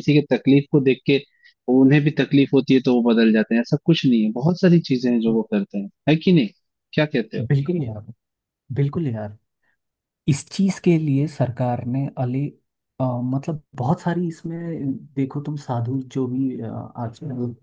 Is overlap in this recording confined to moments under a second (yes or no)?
yes